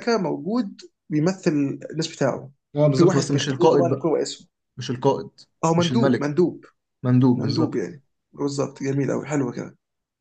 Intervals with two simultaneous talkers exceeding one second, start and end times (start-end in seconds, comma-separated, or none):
2.9-4.2